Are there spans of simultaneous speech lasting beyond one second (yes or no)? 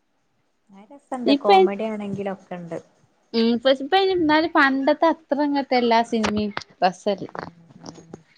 no